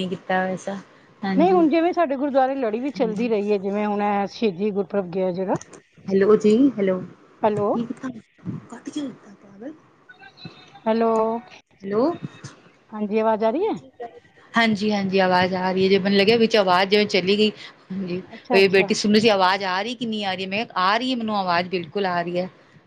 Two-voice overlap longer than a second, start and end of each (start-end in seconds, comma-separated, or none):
none